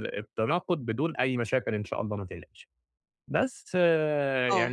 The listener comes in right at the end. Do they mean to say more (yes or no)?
no